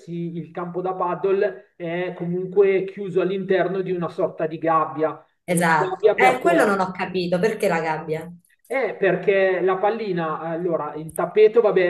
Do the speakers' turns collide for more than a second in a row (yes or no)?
yes